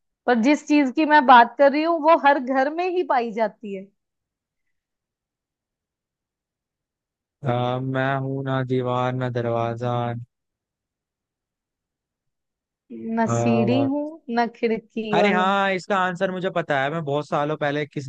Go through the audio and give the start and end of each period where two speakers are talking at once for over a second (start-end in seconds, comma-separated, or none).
none